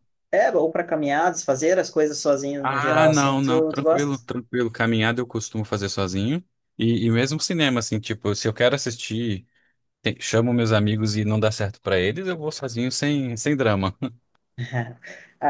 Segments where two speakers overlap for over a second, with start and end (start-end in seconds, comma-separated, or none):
2.7-4.2